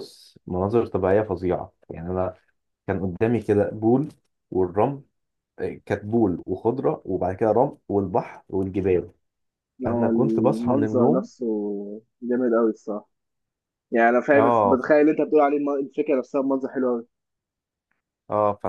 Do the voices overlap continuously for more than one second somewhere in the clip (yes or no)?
yes